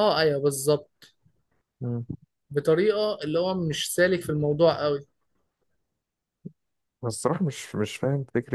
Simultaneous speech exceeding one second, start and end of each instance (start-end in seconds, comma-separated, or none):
none